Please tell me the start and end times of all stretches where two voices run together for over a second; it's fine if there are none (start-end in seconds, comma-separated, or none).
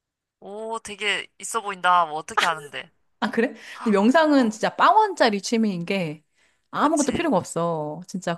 none